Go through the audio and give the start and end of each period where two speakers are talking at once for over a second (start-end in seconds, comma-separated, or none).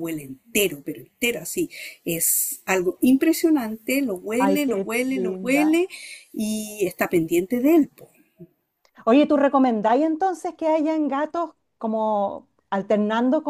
4.4-5.7